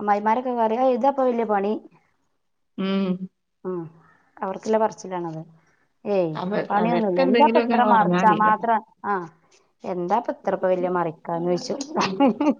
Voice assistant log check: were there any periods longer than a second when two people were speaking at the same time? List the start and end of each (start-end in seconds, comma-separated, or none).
6.4-8.5